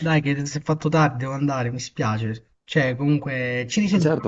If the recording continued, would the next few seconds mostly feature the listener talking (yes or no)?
yes